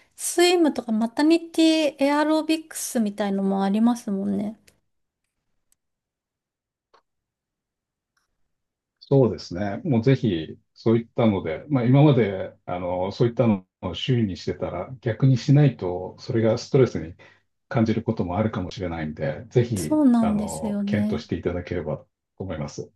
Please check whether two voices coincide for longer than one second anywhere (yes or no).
yes